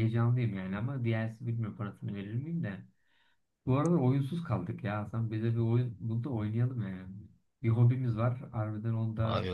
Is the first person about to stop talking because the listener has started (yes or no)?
yes